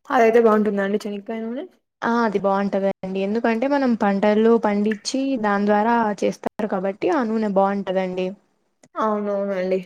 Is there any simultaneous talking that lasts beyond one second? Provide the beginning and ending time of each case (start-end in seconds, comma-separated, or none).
none